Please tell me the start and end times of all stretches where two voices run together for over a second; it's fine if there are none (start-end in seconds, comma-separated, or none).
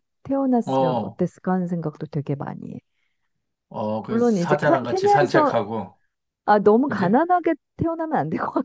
4.1-5.5